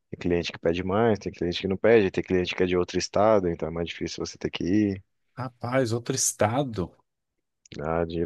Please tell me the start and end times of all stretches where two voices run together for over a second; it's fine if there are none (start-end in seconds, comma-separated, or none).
none